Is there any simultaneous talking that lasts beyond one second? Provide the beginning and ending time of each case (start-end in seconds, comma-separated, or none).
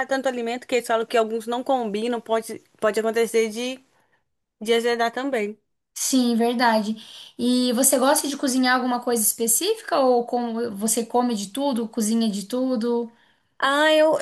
none